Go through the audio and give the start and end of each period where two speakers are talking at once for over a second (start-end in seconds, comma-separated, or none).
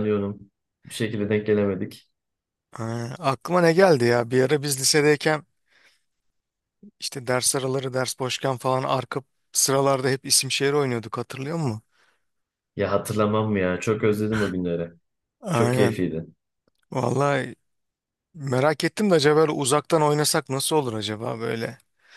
none